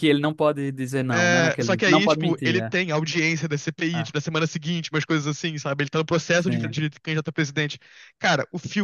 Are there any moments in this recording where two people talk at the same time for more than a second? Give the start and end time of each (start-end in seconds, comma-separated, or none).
1.1-2.7